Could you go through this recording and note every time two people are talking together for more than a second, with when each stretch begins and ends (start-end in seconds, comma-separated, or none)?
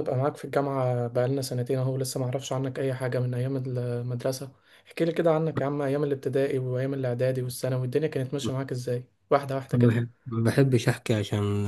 none